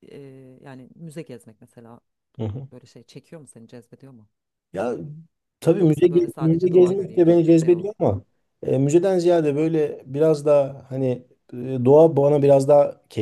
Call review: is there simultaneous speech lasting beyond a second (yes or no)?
yes